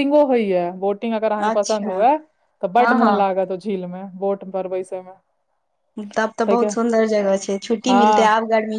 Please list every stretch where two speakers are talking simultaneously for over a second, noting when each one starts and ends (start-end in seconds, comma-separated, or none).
none